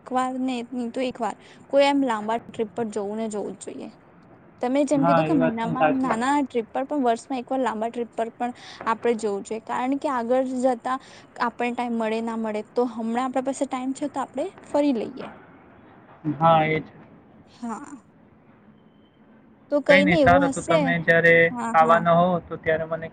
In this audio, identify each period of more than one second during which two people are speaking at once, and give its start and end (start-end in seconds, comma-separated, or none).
5.0-6.4